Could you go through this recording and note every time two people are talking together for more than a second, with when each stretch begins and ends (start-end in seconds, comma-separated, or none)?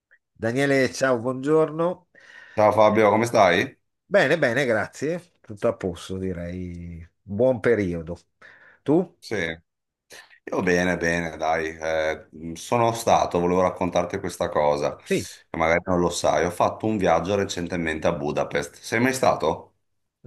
none